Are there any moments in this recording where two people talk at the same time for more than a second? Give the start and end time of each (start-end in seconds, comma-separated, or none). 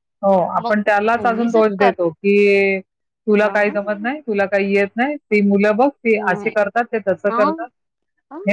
0.6-1.9